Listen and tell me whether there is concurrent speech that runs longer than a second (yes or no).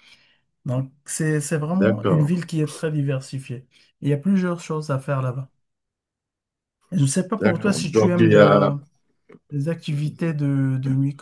yes